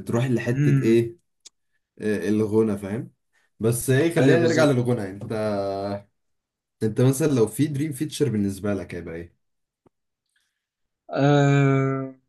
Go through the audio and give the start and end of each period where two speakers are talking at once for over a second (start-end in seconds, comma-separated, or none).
none